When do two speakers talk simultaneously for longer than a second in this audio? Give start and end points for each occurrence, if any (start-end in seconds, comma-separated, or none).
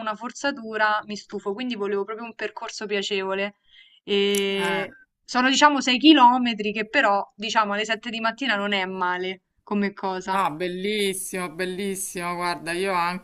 none